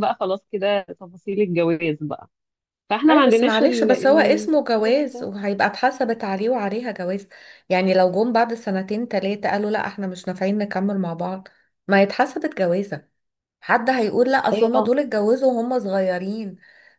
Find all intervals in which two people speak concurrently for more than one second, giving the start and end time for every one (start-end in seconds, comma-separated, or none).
3.1-5.3